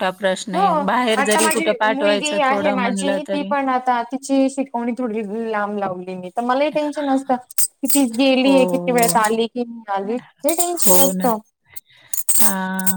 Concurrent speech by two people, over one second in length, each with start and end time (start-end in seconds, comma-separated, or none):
1.2-3.5